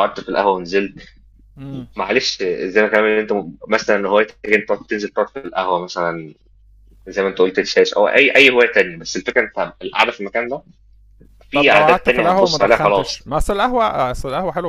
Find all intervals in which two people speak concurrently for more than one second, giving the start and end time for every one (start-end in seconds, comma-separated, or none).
11.5-13.3